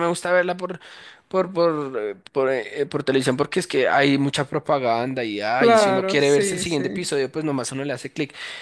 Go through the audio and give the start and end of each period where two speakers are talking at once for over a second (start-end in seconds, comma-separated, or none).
5.5-7.1